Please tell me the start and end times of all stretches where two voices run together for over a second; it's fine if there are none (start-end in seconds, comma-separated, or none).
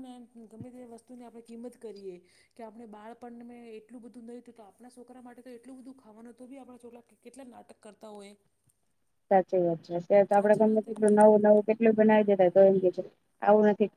10.4-11.6